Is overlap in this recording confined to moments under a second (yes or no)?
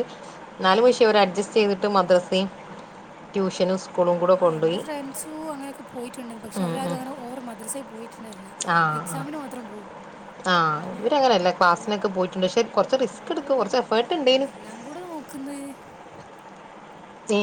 yes